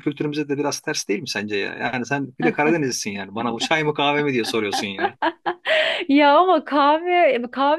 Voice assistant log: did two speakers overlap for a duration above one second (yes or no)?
no